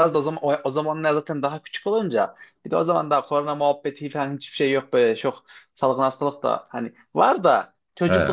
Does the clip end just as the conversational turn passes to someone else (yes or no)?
no